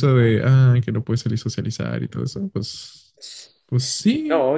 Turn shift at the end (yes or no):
yes